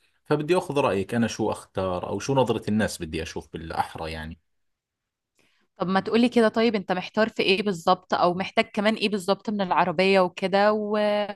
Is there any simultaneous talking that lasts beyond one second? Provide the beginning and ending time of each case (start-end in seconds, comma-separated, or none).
none